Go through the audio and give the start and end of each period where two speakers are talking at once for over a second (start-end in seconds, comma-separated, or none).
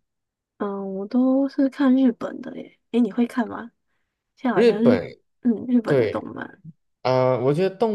none